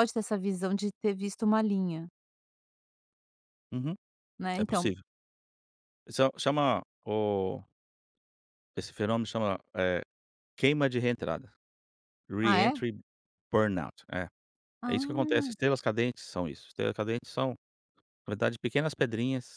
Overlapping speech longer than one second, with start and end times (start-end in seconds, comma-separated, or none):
none